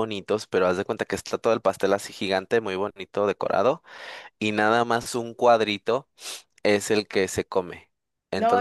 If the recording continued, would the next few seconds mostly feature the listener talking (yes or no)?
no